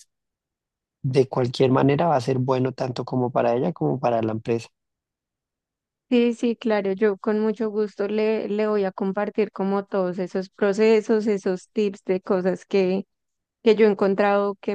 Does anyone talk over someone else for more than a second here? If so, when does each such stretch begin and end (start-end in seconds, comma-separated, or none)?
none